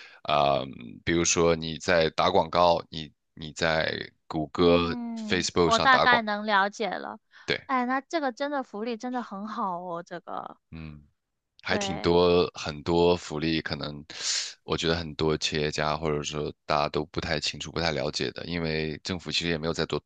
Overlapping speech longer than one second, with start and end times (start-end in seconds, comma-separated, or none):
4.6-6.3